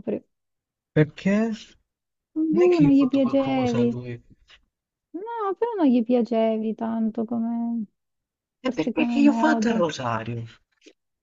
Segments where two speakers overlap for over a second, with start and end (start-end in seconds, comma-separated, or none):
2.5-4.0, 8.6-9.9